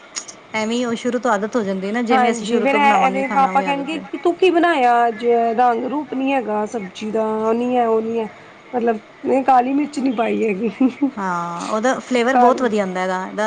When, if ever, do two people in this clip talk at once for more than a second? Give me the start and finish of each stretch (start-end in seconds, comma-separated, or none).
2.1-4.2